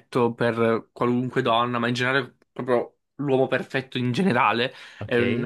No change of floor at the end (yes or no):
yes